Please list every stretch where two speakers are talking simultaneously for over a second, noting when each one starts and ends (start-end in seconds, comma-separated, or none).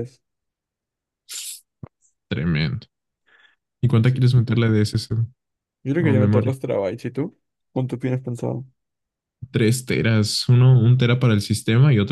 none